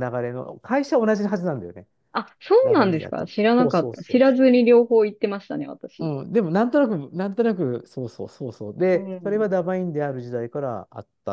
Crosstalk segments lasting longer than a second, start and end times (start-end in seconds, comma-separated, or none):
2.6-4.5